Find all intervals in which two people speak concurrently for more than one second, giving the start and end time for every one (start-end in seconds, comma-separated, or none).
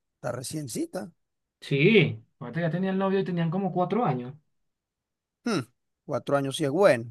none